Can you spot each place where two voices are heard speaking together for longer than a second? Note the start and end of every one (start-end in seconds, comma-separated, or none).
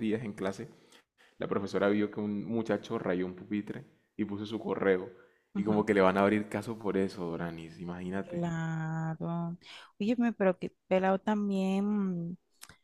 none